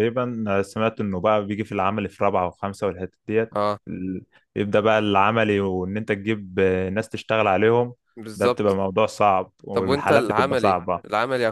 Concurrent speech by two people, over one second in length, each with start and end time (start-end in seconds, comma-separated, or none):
9.7-11.0